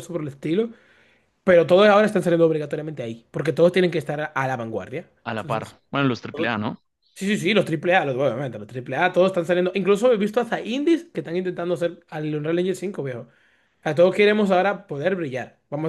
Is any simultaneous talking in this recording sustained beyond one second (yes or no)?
no